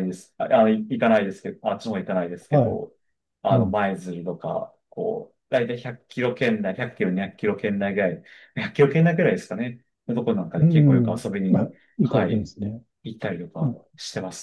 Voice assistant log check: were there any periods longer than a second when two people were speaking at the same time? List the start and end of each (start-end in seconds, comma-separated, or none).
10.6-12.5